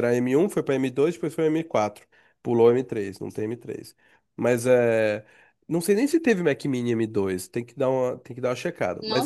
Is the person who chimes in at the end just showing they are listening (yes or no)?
no